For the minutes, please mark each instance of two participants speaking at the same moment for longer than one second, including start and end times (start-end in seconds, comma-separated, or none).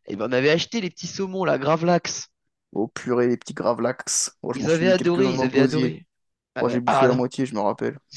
4.5-6.0